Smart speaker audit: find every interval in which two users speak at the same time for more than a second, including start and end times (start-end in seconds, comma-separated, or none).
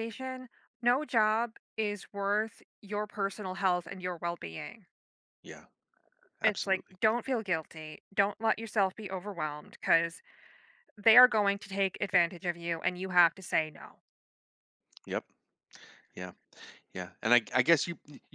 none